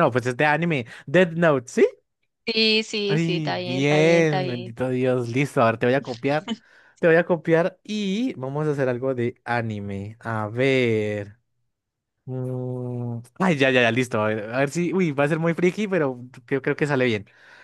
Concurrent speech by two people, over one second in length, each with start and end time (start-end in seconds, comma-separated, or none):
3.1-4.7